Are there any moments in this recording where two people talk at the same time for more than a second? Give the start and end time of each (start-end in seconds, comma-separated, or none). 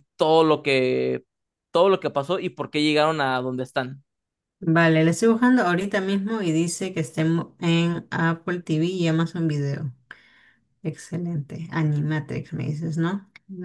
none